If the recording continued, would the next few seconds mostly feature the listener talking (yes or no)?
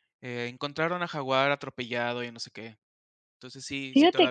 yes